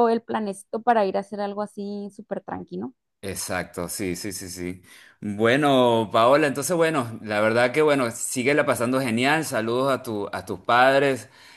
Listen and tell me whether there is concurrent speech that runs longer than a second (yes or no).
no